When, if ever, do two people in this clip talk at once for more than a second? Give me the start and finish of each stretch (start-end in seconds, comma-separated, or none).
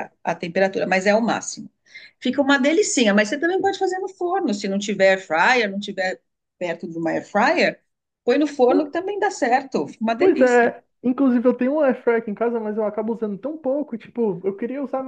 none